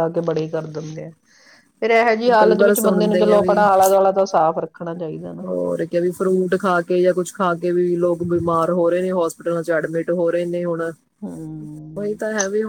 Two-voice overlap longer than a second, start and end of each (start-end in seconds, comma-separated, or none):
2.4-3.6